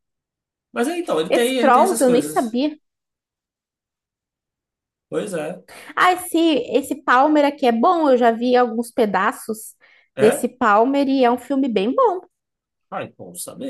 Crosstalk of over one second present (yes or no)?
yes